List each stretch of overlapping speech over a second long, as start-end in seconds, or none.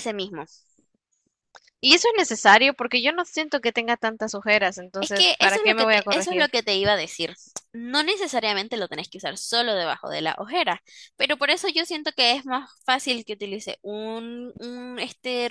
5.0-6.5